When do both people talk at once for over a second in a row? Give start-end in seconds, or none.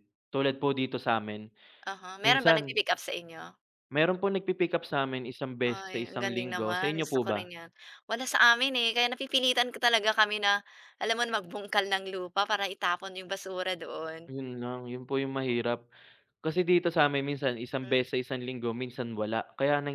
5.6-7.5